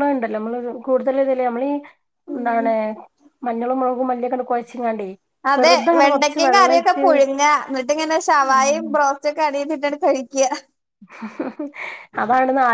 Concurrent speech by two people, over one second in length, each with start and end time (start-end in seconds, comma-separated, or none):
none